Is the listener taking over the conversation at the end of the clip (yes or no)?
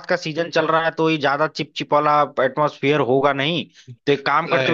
no